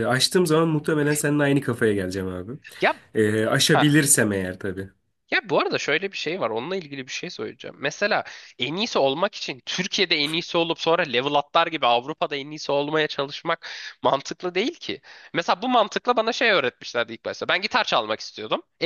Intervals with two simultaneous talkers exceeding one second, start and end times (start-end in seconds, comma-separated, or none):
none